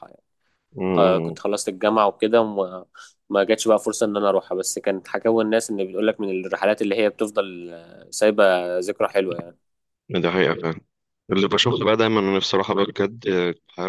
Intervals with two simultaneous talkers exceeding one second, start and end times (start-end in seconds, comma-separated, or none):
none